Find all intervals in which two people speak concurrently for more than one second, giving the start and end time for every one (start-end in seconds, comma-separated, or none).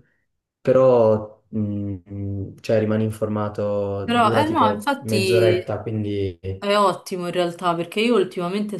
4.0-5.8